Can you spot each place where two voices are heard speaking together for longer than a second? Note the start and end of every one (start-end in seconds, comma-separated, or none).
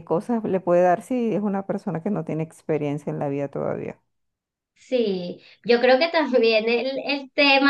none